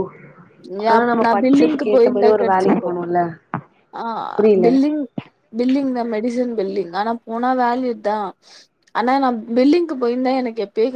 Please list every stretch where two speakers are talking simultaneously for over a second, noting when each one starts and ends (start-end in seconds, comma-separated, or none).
1.2-2.9